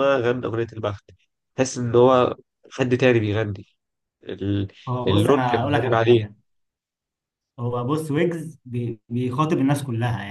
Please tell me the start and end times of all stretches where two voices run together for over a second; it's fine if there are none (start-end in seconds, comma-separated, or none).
5.1-6.3